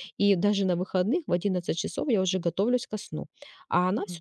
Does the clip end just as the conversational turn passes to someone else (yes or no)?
no